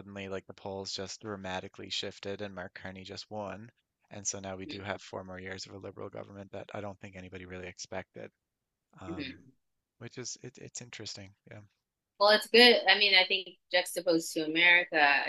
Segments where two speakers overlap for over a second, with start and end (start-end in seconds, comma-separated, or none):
none